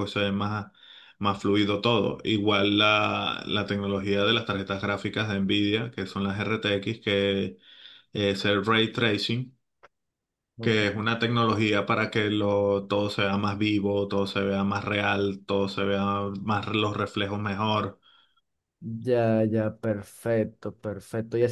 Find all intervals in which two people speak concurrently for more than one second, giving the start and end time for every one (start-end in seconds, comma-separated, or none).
none